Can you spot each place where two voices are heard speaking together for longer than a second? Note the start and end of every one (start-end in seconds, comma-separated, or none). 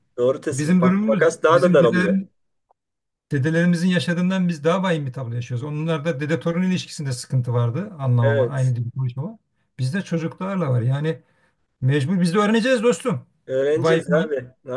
0.5-2.1